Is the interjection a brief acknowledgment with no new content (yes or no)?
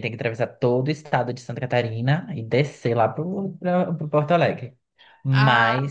yes